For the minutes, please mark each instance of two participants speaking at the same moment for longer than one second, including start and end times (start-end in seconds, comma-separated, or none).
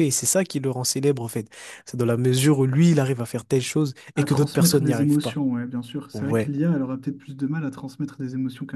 4.2-5.4